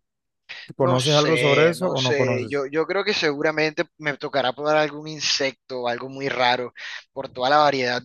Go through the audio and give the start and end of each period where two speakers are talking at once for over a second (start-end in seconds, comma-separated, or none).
0.8-2.6